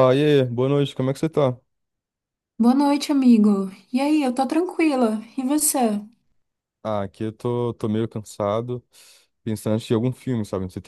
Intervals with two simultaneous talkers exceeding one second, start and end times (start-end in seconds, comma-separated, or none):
none